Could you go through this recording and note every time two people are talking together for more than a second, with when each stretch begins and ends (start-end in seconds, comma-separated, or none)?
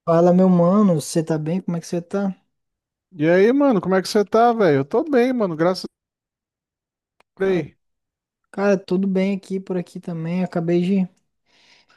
none